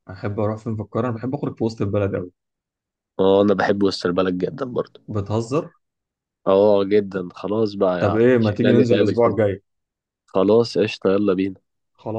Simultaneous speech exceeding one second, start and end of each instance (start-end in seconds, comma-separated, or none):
8.0-9.4